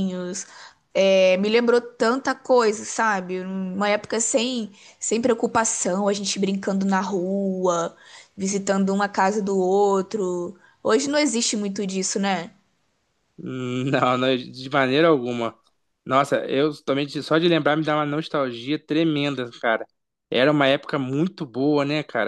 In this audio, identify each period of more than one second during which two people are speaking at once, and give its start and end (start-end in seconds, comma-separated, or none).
none